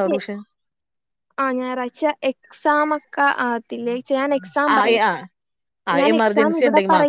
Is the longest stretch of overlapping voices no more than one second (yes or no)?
yes